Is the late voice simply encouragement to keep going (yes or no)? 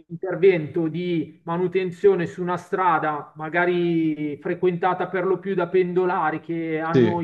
yes